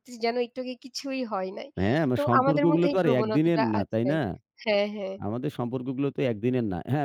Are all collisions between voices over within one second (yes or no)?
no